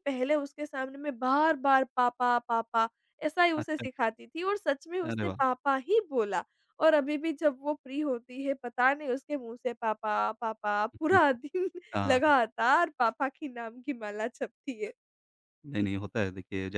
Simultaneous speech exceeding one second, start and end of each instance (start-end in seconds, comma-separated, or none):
none